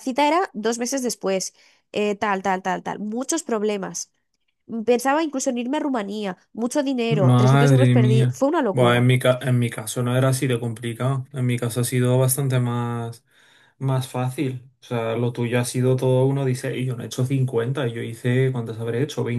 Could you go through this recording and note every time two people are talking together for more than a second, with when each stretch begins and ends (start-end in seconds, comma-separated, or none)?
7.1-9.1